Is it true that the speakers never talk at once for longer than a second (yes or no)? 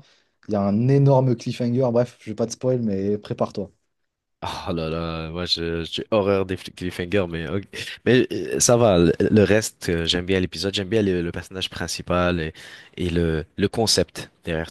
yes